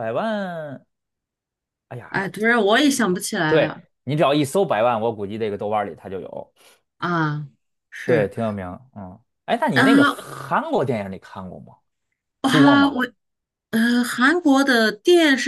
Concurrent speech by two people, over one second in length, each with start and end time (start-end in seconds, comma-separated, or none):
none